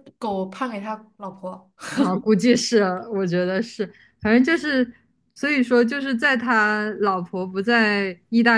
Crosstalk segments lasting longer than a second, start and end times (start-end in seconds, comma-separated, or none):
none